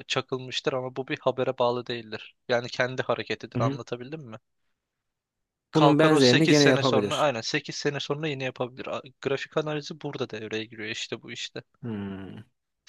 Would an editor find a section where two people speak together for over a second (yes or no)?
yes